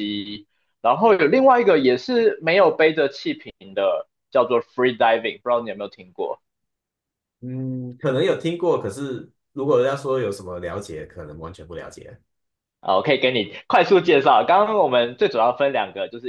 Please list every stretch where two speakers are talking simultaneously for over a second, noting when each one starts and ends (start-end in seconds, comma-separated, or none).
none